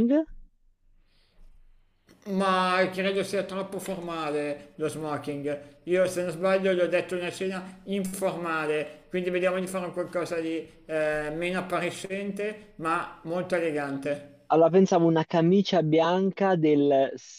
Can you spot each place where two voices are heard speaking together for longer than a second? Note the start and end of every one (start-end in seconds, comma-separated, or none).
none